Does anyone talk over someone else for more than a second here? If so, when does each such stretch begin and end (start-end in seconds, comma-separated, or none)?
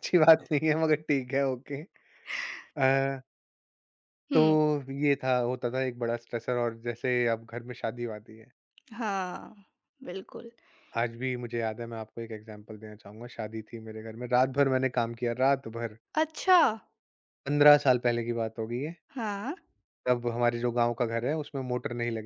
none